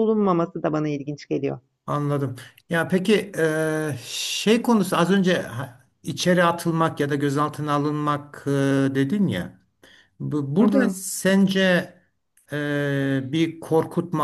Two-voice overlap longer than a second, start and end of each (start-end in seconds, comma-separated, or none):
none